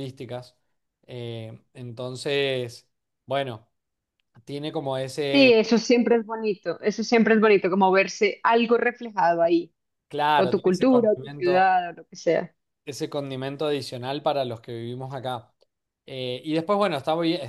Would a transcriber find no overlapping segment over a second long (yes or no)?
no